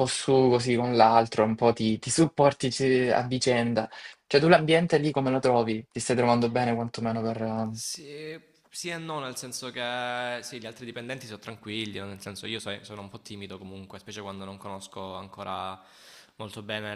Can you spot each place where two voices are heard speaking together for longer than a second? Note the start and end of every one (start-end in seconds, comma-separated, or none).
none